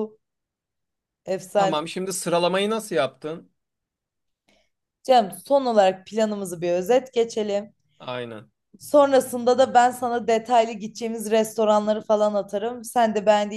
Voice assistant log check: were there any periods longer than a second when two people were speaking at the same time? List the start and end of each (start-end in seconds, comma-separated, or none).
none